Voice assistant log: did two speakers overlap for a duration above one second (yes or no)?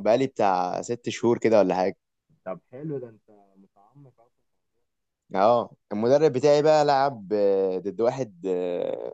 no